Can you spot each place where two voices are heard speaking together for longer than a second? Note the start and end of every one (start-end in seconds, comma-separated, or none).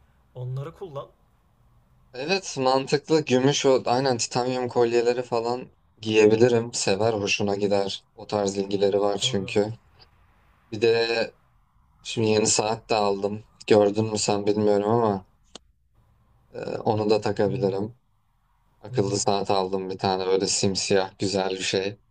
none